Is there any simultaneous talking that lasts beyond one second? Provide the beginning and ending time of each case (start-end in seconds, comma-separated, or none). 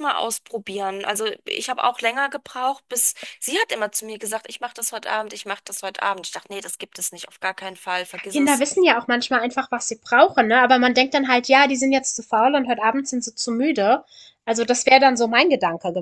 none